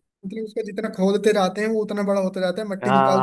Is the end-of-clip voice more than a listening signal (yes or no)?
yes